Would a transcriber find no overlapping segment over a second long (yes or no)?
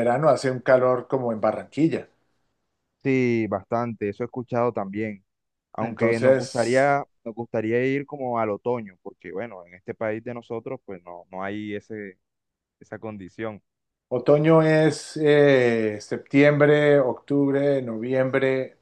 no